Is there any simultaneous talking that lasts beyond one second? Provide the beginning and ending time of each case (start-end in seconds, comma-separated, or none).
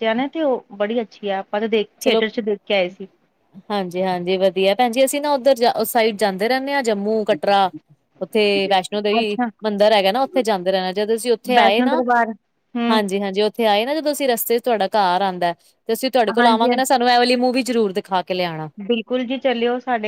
none